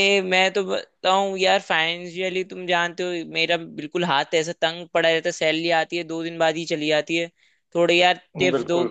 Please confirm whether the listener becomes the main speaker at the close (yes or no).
no